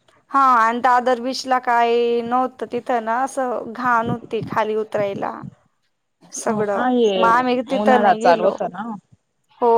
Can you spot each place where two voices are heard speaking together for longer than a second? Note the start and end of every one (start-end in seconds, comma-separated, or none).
6.5-8.5